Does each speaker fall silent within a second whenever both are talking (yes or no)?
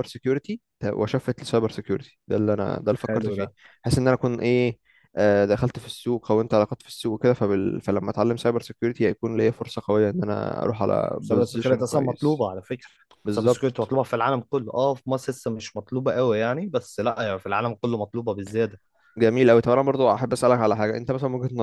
no